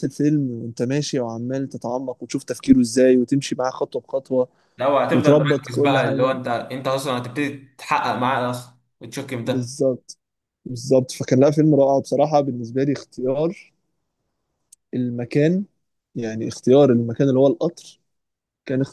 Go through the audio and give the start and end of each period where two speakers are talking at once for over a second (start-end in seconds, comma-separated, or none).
5.1-6.4